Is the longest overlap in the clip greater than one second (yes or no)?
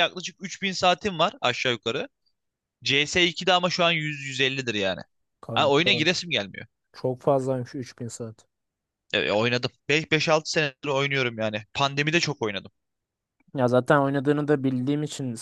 no